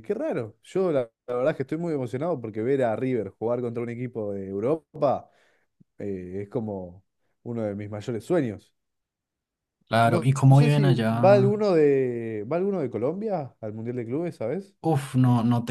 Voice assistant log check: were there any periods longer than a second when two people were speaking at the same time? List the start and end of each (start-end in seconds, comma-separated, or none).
10.0-11.6